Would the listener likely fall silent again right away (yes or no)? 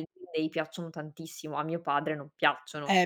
no